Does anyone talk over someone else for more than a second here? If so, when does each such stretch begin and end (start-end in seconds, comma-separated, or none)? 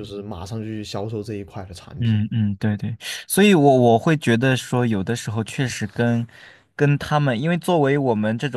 none